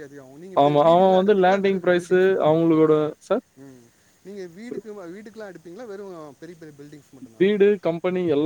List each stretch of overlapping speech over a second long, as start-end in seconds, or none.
0.6-2.8